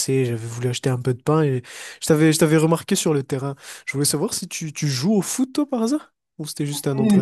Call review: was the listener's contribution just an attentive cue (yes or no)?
no